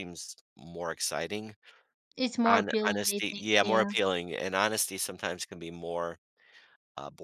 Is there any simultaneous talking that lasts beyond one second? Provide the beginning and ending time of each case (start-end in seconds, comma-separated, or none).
2.5-3.9